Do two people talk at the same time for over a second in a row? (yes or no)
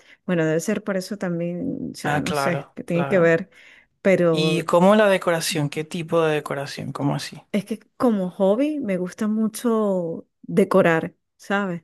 yes